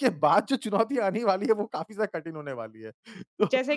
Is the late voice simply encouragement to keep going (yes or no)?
yes